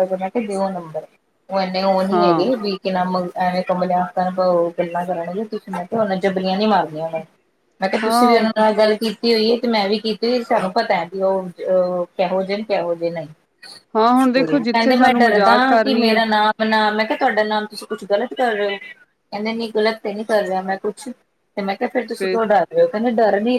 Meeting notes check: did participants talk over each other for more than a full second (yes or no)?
yes